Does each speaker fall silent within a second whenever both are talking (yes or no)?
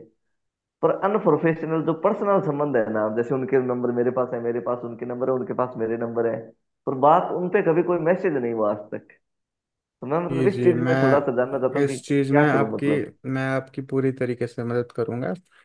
no